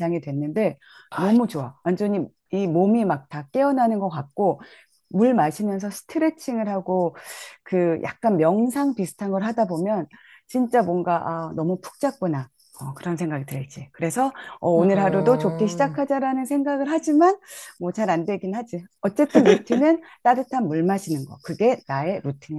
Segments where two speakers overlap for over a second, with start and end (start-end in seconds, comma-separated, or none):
14.7-15.9